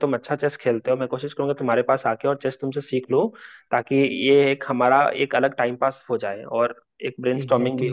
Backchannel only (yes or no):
no